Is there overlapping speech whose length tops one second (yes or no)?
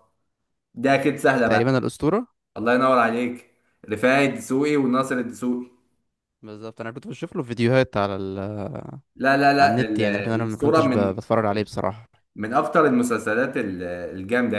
yes